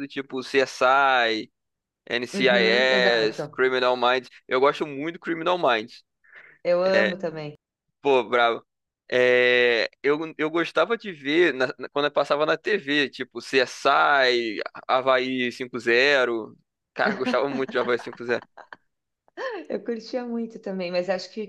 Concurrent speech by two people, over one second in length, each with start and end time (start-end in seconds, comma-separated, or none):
2.3-3.6